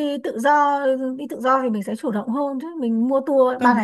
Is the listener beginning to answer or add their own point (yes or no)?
yes